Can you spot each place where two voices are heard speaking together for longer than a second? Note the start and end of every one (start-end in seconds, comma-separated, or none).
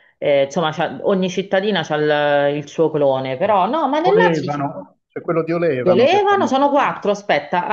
5.8-7.1